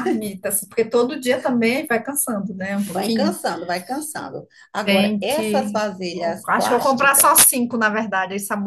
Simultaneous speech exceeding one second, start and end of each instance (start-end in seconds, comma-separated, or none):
4.8-7.3